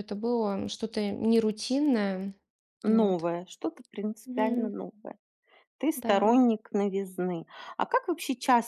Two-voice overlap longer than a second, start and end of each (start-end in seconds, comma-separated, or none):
none